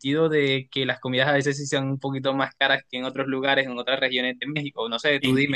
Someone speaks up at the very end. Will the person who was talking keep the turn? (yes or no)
no